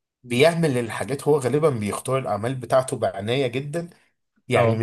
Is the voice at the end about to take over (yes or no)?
no